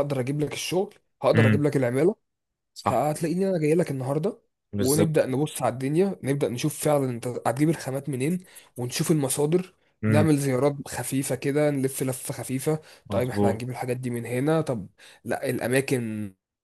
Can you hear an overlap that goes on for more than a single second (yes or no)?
no